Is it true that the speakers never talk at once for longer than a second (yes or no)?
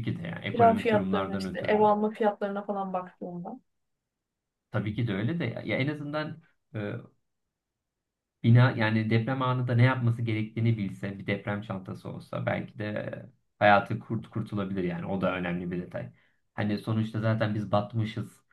no